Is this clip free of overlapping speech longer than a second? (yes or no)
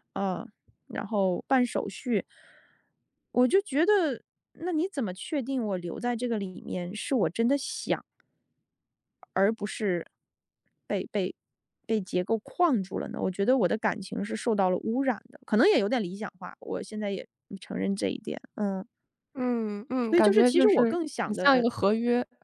no